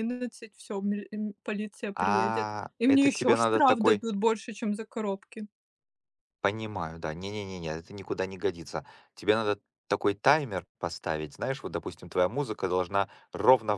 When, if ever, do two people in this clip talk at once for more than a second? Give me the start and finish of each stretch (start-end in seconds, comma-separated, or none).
2.0-4.0